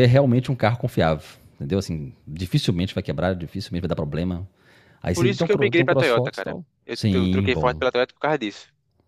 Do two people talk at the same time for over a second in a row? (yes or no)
yes